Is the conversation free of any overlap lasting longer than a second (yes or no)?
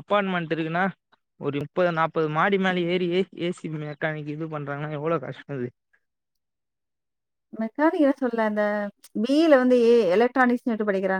yes